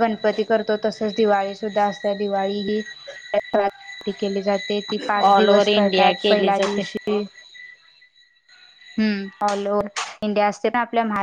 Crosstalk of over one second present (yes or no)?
yes